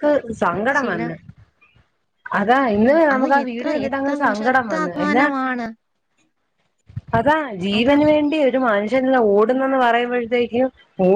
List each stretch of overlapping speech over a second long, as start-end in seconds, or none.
2.8-5.2